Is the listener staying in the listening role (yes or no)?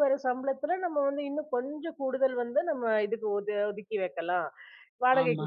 yes